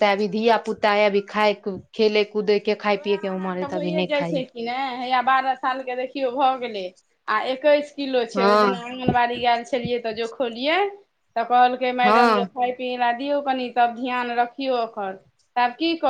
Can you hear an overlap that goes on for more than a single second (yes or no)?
no